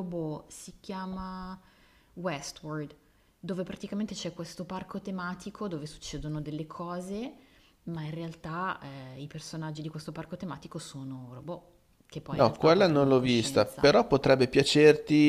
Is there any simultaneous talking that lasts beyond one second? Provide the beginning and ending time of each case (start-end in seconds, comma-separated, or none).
12.4-13.9